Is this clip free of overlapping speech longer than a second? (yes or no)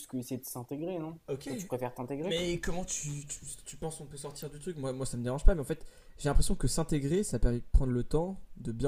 yes